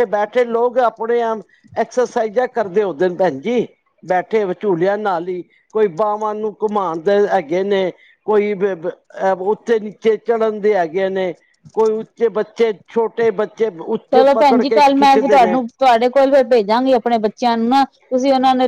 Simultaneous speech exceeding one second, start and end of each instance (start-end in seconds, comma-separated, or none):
14.1-15.6